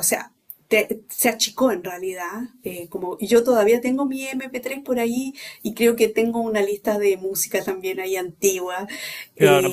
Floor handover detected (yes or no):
yes